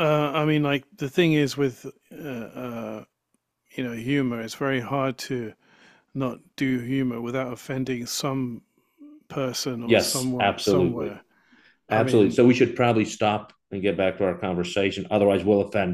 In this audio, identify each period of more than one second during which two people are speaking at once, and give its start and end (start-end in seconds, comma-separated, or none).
9.8-11.2